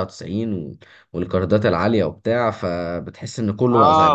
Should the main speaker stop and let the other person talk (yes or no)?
yes